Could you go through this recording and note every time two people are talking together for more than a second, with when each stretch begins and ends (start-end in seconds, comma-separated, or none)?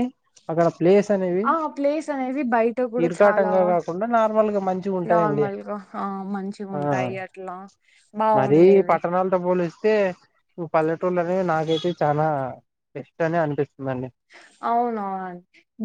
none